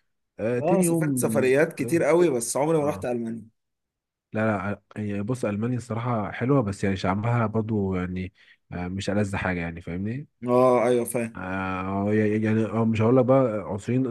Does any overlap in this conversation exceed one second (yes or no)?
yes